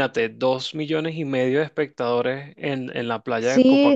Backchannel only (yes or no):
no